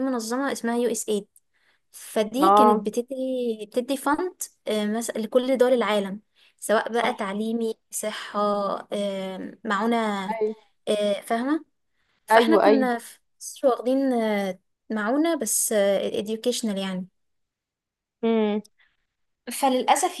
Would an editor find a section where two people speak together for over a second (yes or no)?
no